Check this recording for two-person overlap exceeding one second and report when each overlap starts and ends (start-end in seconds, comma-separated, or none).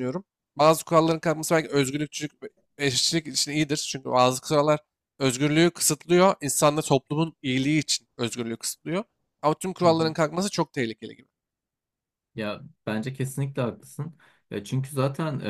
none